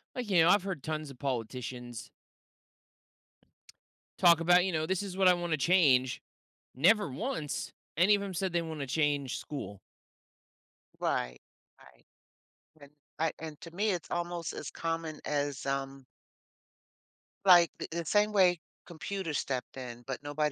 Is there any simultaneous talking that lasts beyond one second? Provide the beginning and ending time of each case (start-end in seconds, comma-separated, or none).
none